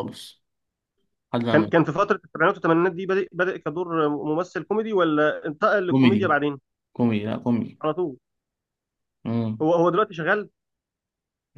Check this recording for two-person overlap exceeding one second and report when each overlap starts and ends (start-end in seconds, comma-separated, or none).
none